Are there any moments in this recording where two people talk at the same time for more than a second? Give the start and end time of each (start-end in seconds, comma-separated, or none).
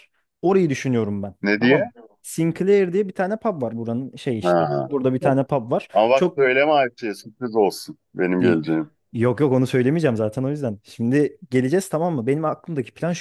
none